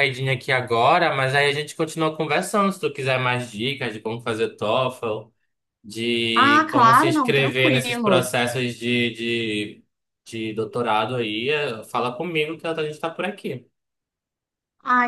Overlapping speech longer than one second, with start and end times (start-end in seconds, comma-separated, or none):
6.3-8.3